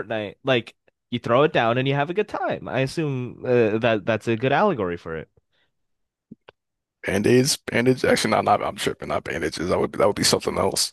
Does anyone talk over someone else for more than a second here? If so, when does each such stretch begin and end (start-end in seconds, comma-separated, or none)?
none